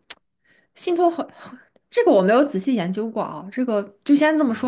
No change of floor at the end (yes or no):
no